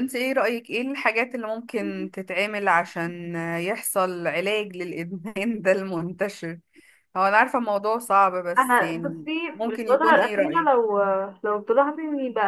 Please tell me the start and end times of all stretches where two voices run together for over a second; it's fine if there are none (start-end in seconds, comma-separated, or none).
8.6-10.7